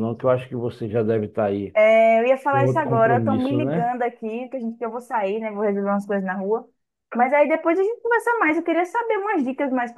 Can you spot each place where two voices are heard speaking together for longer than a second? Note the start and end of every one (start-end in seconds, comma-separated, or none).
2.5-3.9